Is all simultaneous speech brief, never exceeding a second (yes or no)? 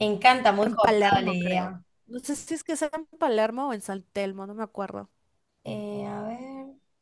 no